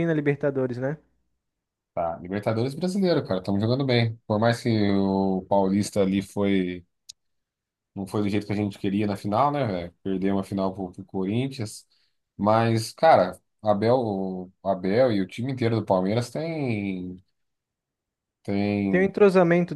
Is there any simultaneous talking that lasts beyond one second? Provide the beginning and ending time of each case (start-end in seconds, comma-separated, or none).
none